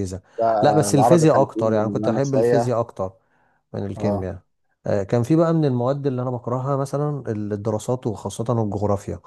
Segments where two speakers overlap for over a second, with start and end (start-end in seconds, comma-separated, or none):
0.6-2.7